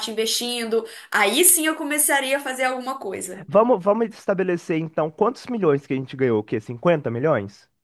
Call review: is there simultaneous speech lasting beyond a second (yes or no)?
no